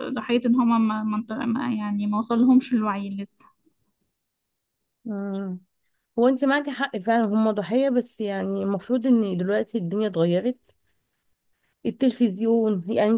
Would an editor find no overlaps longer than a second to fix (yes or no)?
yes